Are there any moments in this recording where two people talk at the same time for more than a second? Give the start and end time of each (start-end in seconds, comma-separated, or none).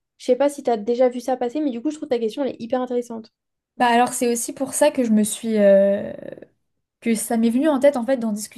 none